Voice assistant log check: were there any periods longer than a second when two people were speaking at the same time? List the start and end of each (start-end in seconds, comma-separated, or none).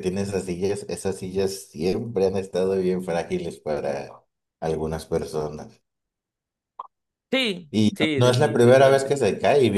7.7-9.2